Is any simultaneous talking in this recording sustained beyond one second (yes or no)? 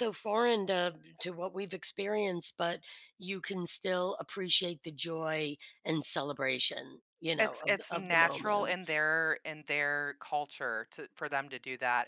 yes